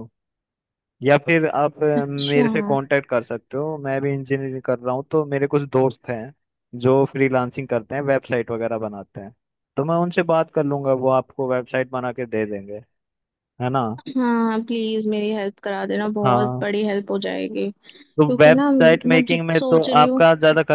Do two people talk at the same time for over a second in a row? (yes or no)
yes